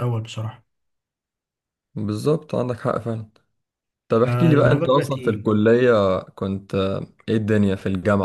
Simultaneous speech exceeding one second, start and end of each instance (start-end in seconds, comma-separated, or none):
4.1-5.5